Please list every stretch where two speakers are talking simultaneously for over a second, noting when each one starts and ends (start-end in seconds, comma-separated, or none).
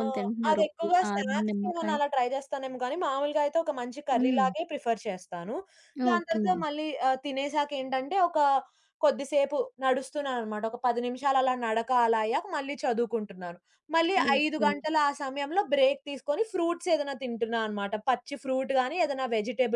0.5-1.9